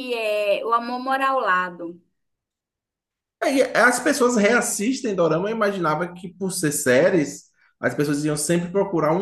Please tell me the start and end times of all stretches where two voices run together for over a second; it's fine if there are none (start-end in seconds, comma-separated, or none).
none